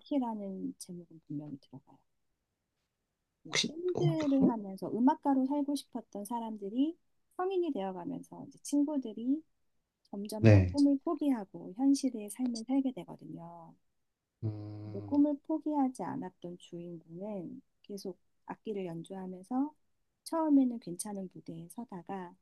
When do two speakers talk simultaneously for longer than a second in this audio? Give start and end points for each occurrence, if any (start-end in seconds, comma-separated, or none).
none